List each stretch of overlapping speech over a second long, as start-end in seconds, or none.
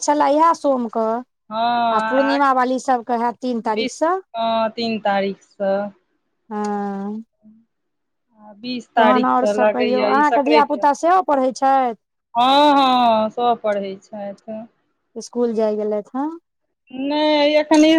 9.0-10.7